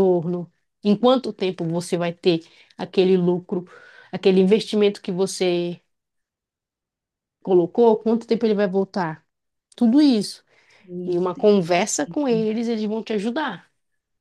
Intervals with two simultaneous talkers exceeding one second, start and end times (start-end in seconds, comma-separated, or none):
11.1-12.5